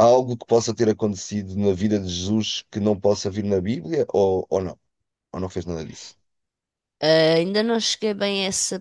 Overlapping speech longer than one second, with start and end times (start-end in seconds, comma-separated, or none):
none